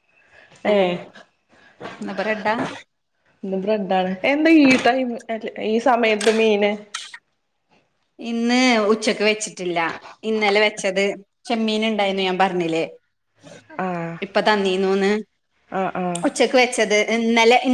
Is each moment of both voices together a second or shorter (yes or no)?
yes